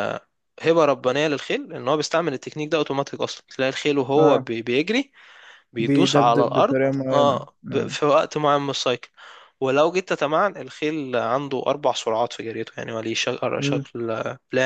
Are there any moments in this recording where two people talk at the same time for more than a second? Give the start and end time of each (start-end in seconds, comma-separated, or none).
5.8-8.0